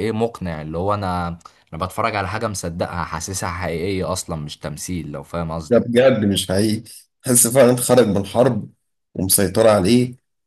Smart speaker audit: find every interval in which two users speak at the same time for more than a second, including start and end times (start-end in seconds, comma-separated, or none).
none